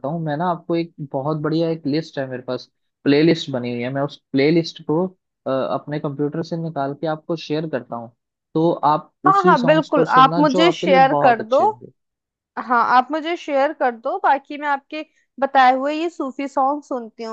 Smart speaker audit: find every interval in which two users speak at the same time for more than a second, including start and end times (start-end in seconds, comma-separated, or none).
9.3-11.6